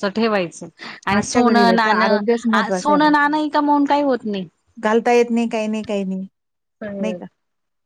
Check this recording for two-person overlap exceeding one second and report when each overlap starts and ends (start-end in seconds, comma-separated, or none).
1.2-3.1